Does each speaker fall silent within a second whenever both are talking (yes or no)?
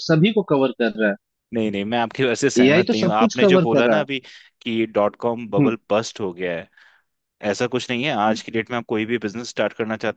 no